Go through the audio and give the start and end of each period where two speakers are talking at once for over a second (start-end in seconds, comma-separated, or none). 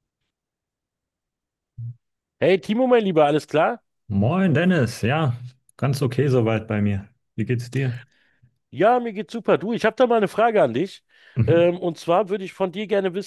none